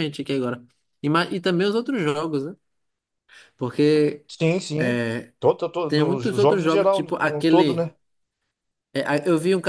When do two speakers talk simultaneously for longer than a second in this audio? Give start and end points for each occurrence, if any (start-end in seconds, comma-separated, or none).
5.9-7.8